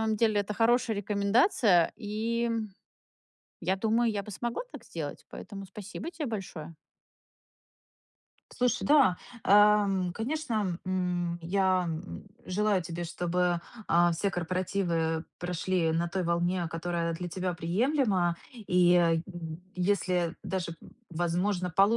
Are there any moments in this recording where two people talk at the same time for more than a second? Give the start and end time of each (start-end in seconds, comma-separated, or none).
none